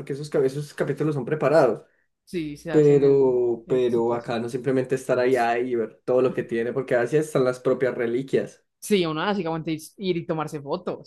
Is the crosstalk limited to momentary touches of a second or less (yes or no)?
no